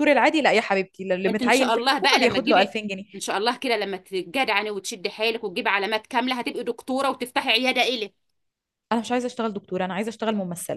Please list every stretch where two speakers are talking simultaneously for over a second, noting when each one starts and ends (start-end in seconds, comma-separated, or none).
1.2-2.7